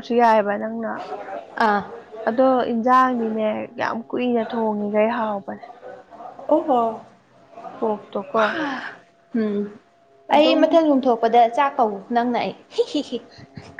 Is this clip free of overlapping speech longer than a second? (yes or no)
yes